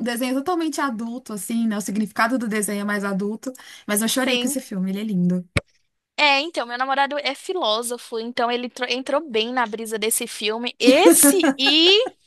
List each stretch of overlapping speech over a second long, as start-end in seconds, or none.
none